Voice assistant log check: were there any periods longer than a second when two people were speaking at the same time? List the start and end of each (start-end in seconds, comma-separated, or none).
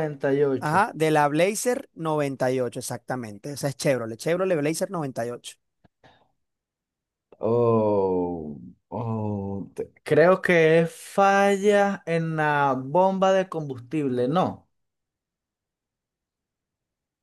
none